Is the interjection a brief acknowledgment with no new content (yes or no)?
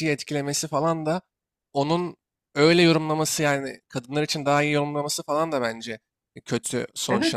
yes